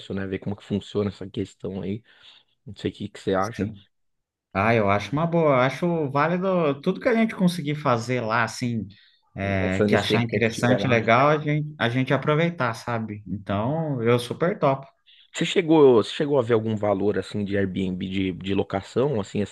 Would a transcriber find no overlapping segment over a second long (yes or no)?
no